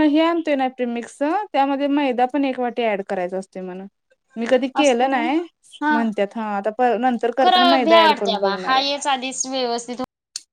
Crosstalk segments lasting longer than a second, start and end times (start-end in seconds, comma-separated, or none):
7.4-8.8